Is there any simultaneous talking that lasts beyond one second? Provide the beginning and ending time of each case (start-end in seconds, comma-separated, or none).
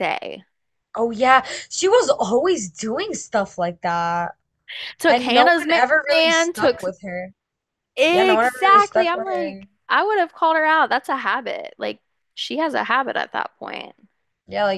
5.1-6.8, 8.1-9.7